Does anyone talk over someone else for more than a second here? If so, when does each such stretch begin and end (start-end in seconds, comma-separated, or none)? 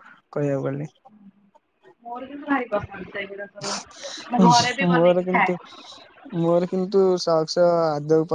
none